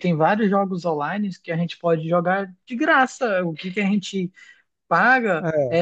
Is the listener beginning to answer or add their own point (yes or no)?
no